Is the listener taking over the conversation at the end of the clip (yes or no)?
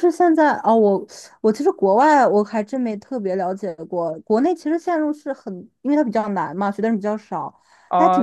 yes